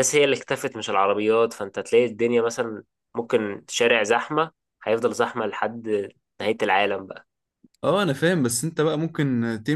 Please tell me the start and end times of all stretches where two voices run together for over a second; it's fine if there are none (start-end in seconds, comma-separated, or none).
none